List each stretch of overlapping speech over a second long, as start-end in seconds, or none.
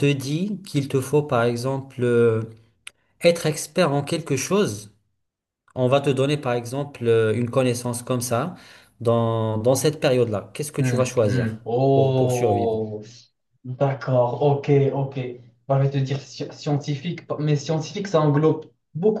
10.8-12.8